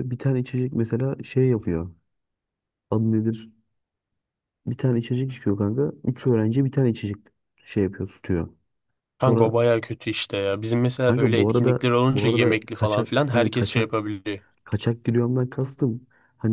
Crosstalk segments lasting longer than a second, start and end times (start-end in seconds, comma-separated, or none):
11.0-13.9